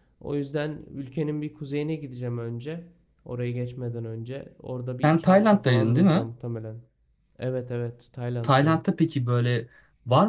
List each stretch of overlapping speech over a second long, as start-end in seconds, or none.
5.0-6.3